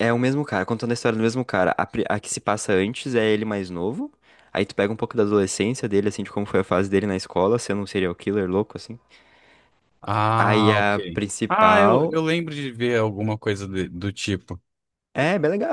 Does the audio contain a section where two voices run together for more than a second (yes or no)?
yes